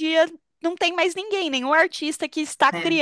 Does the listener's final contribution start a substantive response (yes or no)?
no